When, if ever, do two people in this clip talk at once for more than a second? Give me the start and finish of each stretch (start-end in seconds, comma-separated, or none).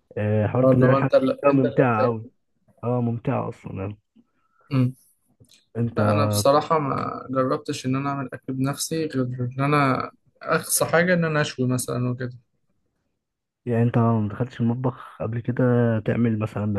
0.6-2.3